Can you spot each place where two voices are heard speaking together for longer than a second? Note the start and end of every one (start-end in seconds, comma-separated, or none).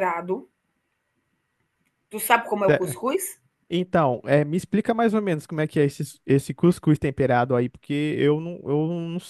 none